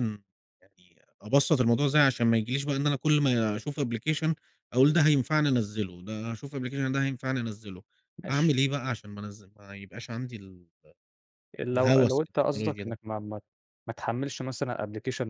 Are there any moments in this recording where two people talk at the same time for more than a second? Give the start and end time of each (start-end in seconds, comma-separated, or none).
11.8-13.0